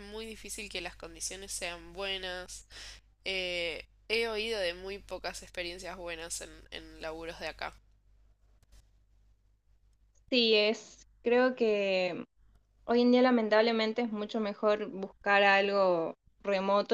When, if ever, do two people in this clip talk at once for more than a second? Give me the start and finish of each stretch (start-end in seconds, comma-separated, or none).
none